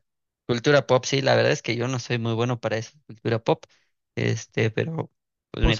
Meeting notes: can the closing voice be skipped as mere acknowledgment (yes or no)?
no